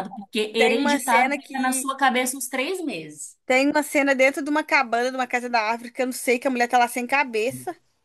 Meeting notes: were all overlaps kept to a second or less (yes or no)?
no